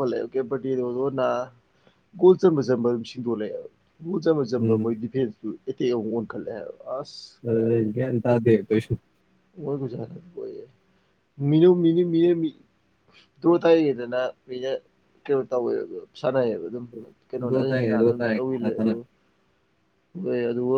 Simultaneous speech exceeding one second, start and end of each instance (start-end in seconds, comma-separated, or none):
17.3-18.9